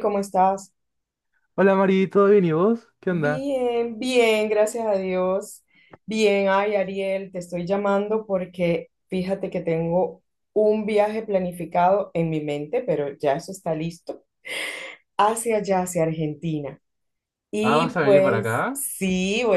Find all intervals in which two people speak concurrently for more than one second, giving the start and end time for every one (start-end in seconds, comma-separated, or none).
17.6-18.9